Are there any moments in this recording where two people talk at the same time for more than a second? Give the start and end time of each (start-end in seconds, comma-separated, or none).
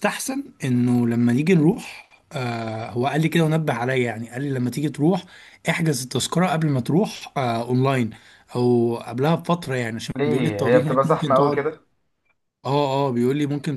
10.2-11.6